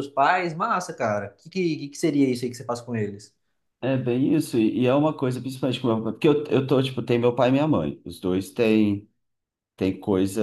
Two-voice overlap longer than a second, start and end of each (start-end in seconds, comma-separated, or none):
none